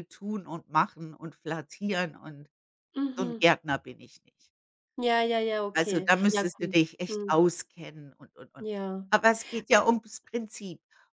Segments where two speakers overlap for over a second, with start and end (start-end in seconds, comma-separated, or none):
5.8-7.5